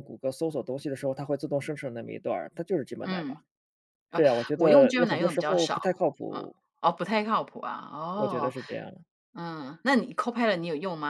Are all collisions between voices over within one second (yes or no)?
no